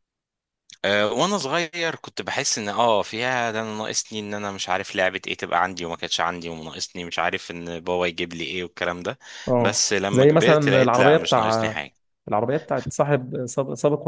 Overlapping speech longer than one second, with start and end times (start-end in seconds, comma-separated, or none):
9.6-11.8